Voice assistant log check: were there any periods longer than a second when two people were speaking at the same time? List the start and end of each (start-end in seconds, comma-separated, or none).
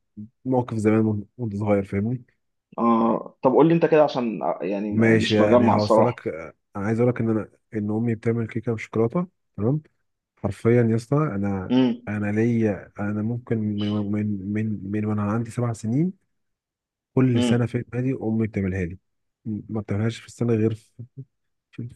4.9-6.2